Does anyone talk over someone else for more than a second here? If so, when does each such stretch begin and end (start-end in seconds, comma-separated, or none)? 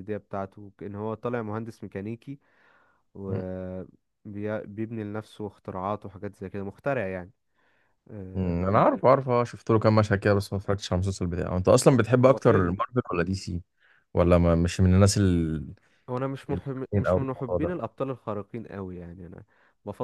16.5-17.8